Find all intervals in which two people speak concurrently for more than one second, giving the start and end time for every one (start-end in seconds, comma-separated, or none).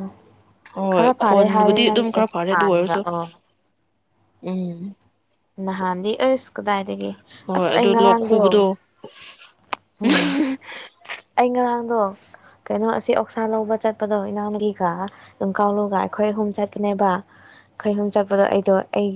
0.9-3.0